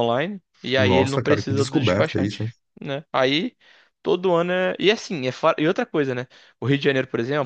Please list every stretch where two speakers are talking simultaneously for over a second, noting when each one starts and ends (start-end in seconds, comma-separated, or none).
0.8-2.4